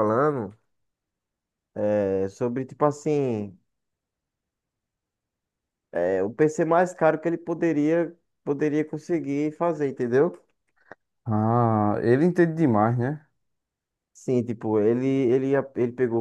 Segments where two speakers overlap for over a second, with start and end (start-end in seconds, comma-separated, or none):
none